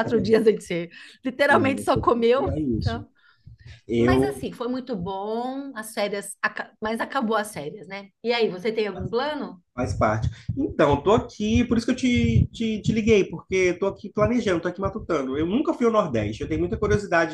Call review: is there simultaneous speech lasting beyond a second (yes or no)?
yes